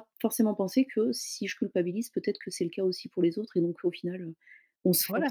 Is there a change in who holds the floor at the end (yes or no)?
yes